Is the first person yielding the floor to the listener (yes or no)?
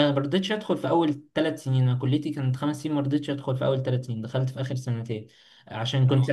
no